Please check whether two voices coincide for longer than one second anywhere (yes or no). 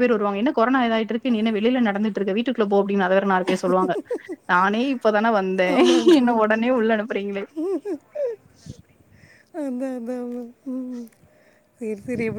no